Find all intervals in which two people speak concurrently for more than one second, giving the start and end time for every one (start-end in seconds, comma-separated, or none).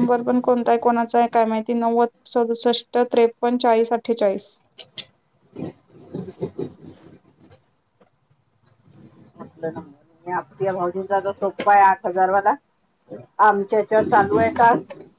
none